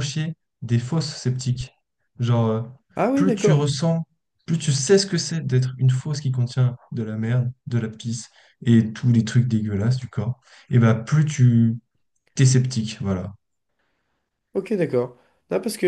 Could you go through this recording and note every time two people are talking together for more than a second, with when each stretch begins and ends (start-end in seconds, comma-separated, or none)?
none